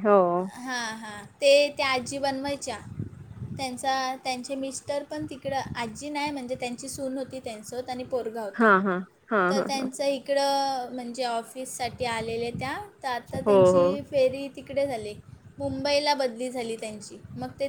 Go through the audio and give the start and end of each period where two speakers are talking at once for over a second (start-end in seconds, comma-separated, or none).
none